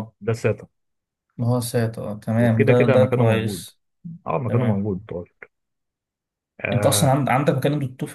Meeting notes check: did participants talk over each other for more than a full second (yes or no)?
yes